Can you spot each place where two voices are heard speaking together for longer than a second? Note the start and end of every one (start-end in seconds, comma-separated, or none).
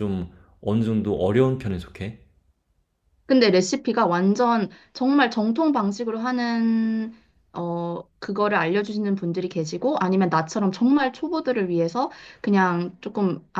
none